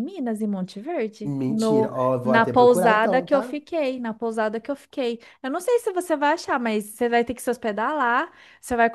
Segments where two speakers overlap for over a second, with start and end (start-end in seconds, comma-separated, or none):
1.2-3.6